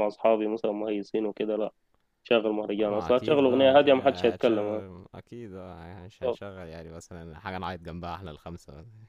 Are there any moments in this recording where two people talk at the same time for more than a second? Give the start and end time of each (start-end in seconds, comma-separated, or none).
2.9-4.8